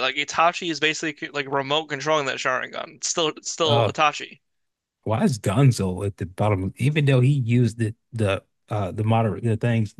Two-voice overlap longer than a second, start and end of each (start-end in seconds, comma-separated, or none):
none